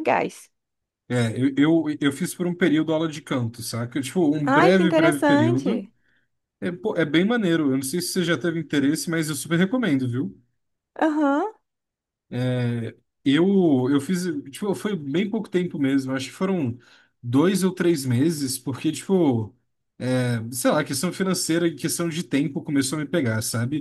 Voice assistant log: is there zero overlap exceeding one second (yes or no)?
no